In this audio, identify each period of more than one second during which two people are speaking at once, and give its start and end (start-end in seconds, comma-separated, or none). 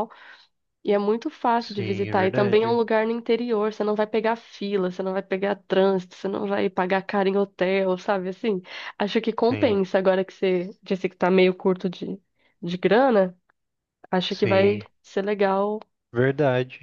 1.6-2.8